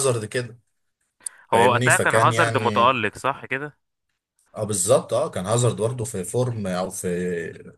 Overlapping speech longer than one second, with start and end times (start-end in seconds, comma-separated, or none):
1.5-3.0